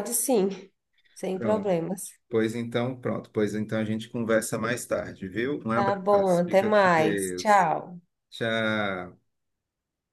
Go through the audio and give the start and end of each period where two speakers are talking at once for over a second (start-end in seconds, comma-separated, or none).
5.7-7.7